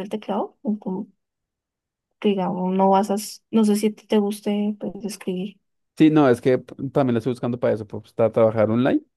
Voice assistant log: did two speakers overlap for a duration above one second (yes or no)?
no